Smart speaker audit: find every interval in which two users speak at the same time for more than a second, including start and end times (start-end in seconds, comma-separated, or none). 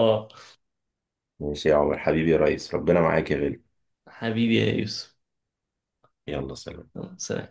none